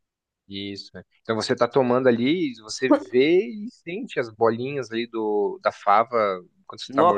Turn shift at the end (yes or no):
yes